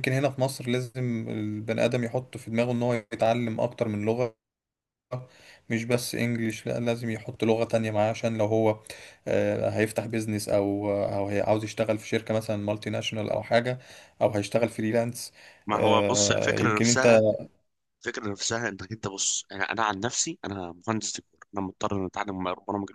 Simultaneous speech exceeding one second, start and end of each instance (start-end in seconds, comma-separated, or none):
15.7-17.1